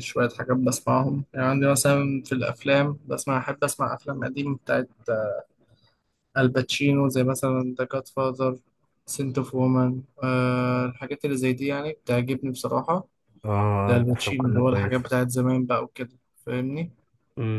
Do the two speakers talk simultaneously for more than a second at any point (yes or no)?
yes